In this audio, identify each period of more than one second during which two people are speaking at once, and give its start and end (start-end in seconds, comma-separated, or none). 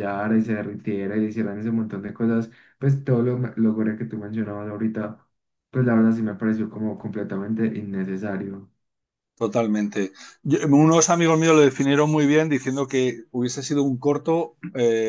none